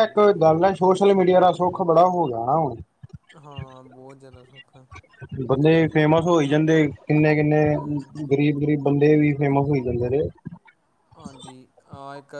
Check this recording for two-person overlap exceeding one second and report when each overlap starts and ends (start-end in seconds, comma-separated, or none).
none